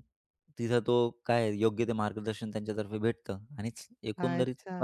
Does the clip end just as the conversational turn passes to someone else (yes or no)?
yes